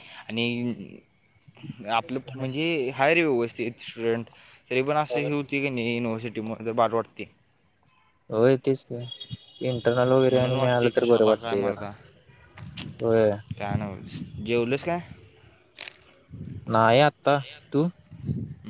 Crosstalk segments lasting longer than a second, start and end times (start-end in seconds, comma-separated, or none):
10.3-11.8